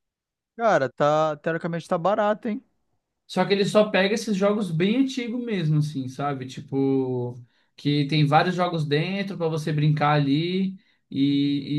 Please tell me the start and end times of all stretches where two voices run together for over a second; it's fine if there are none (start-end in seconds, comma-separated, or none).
none